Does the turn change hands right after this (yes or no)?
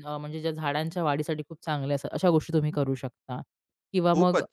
yes